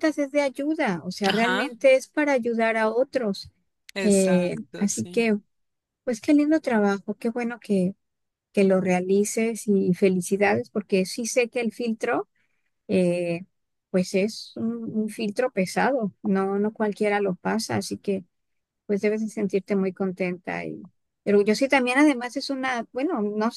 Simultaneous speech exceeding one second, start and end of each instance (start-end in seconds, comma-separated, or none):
4.0-5.3